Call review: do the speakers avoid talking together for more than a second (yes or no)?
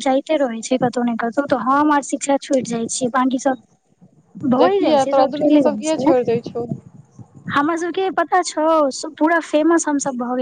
no